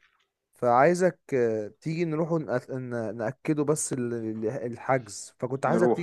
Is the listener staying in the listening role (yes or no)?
yes